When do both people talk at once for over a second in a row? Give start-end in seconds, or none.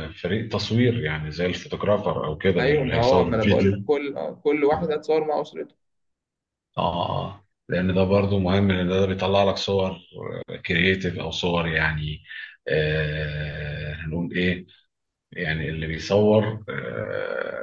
2.6-3.8